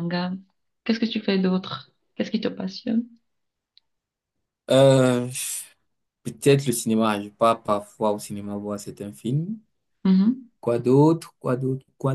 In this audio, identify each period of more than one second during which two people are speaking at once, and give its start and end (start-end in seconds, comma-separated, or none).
none